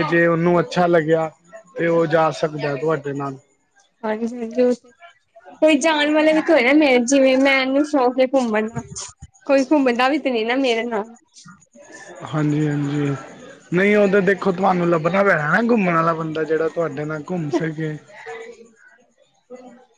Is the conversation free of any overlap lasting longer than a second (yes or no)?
yes